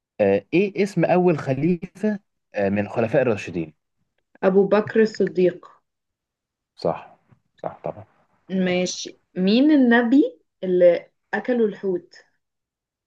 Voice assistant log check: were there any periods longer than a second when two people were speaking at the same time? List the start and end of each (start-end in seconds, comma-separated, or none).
none